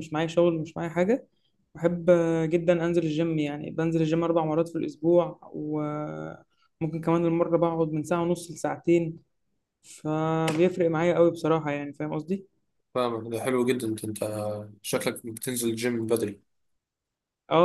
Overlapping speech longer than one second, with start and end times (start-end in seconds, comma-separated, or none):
none